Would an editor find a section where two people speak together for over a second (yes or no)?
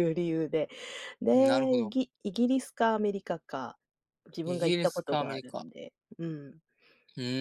yes